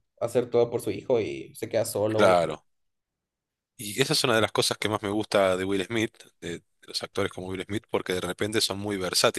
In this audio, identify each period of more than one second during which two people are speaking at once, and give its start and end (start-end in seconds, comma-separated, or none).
none